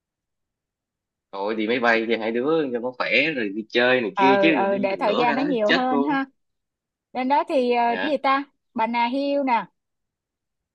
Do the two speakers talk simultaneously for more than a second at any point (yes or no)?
yes